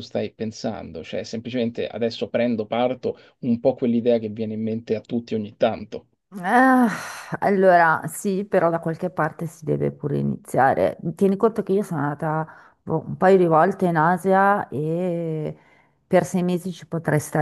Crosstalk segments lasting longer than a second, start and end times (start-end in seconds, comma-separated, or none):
none